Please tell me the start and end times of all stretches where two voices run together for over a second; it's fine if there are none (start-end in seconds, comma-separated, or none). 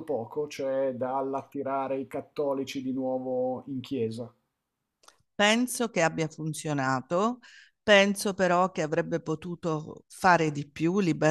none